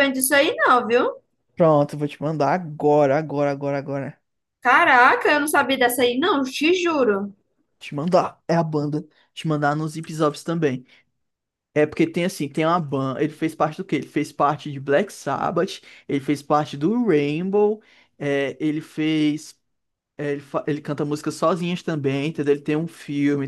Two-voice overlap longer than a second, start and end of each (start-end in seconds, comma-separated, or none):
none